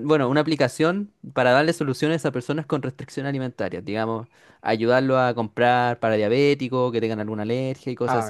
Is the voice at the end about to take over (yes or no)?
no